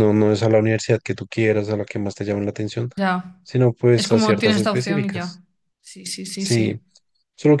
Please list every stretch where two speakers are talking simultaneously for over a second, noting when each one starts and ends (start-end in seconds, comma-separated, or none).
3.9-5.4